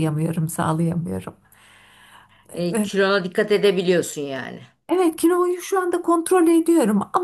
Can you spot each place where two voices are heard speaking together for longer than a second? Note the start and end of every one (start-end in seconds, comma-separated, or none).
none